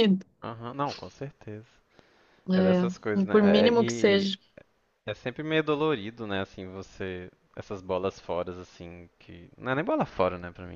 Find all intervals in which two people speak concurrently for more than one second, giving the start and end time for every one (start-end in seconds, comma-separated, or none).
2.5-4.3